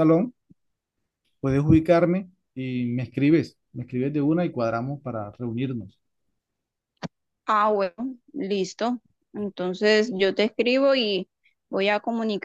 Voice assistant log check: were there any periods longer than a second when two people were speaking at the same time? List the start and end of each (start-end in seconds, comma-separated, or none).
none